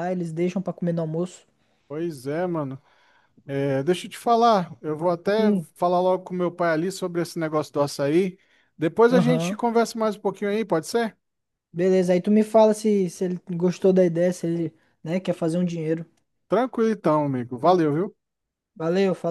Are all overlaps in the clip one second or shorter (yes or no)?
yes